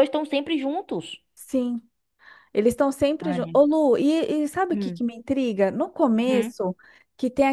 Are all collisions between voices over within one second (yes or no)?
yes